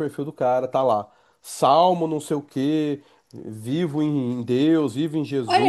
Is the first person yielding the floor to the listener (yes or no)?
yes